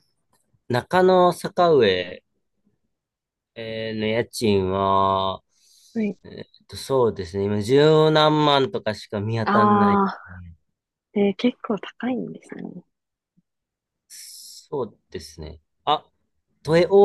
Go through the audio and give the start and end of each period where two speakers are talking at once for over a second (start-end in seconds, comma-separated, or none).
none